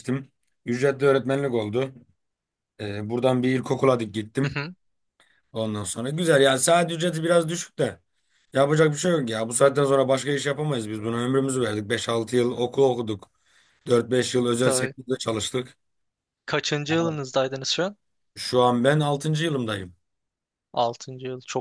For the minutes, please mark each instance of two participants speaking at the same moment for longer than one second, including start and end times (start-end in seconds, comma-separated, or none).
none